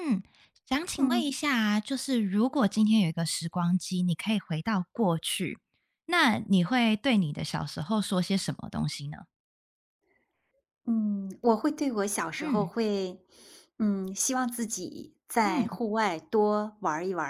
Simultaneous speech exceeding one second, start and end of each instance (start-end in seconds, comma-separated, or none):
none